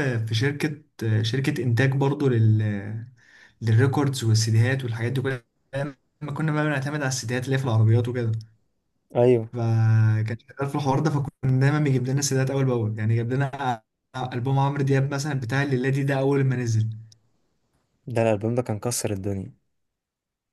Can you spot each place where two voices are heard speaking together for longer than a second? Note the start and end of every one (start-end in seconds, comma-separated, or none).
none